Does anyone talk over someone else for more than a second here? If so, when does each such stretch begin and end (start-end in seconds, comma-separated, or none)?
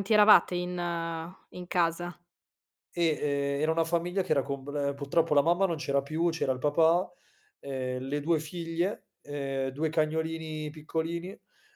none